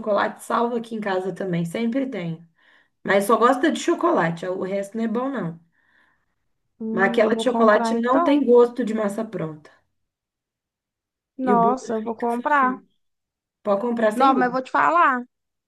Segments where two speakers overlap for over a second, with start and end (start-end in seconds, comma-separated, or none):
6.9-8.4, 11.5-12.8